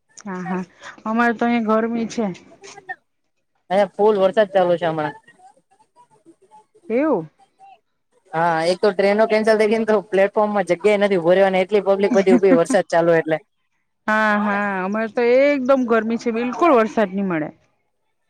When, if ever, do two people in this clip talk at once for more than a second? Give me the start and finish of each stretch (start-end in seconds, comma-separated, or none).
none